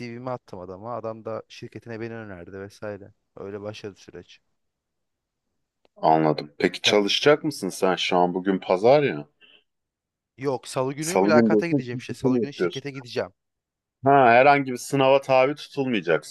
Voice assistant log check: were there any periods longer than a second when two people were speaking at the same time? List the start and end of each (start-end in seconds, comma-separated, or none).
11.0-12.9